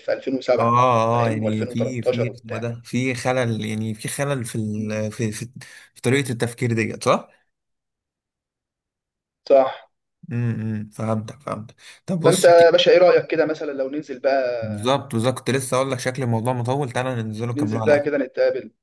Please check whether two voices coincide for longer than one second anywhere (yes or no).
yes